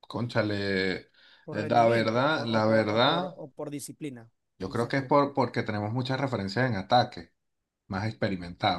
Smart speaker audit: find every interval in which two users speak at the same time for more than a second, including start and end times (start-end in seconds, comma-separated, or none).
1.5-3.4